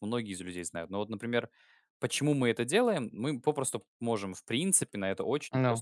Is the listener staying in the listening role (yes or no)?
yes